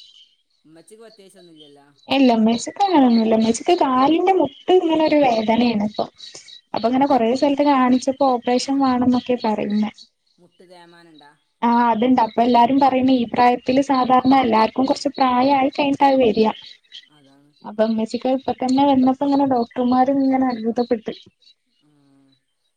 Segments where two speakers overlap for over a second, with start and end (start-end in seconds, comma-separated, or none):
none